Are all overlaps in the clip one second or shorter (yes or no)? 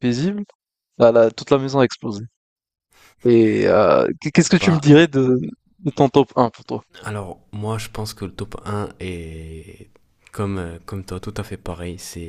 yes